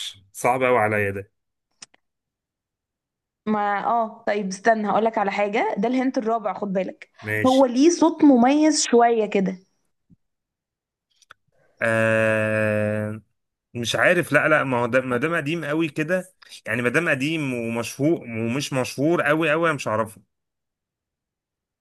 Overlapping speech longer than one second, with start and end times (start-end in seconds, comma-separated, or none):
none